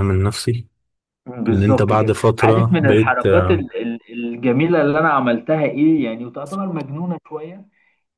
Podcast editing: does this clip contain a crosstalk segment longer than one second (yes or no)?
yes